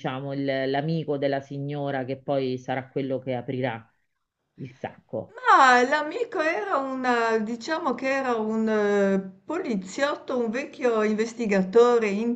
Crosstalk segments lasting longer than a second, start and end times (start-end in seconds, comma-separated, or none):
none